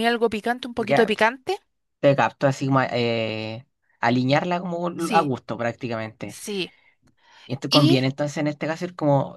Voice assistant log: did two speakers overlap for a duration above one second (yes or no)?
no